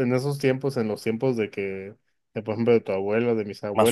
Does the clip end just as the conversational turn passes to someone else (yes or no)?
no